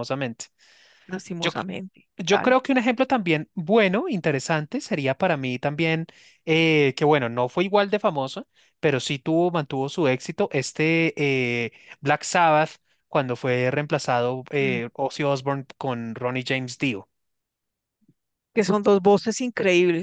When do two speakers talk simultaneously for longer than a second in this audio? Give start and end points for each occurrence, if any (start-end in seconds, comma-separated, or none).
none